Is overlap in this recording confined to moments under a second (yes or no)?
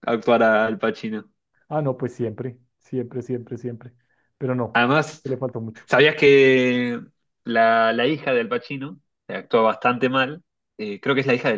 yes